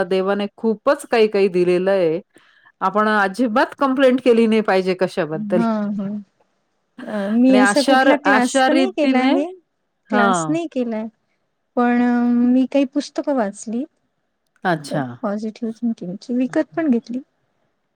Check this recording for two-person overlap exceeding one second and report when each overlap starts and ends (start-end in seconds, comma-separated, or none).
7.5-9.3